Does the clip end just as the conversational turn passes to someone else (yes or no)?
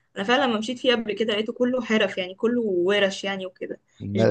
yes